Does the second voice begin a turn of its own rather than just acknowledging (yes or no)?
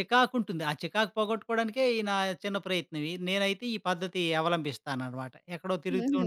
yes